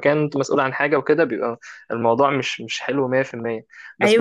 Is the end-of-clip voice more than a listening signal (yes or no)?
yes